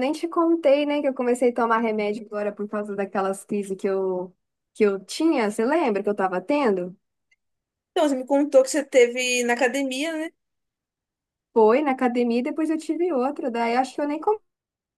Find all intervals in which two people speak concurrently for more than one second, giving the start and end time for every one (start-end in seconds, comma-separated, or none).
none